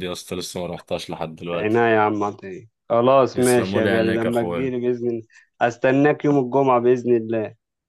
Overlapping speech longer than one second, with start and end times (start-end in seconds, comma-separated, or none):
3.3-4.7